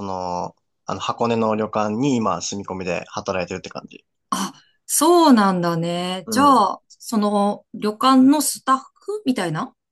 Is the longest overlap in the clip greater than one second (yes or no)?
no